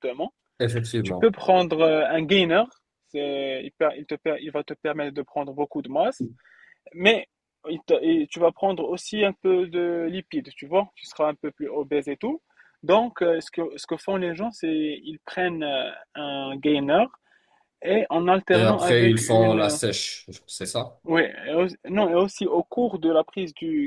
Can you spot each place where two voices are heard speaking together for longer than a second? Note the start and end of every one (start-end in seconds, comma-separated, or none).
18.5-19.8